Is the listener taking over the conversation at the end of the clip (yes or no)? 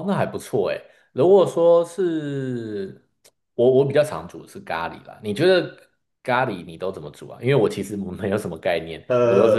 yes